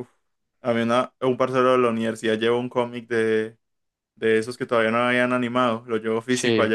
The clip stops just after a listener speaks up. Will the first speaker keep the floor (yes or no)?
yes